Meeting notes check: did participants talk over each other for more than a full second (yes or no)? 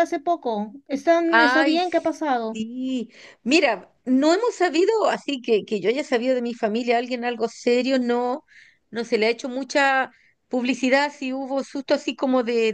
no